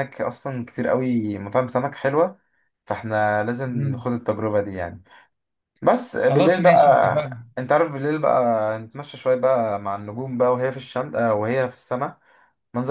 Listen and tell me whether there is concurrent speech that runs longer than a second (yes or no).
yes